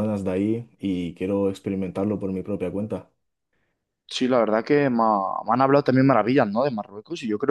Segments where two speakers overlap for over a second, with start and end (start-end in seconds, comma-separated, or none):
none